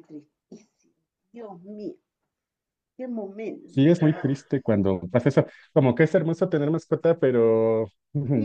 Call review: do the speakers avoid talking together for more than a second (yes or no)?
yes